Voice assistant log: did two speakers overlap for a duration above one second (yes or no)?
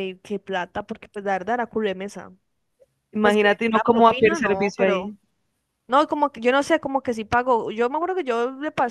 yes